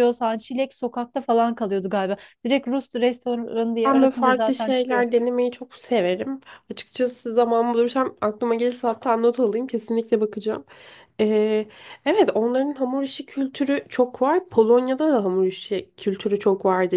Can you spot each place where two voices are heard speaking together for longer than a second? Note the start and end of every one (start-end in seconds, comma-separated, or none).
3.9-5.0